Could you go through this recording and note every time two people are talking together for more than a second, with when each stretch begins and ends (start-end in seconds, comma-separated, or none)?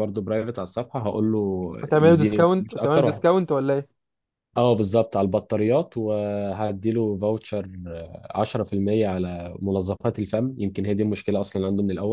1.8-3.2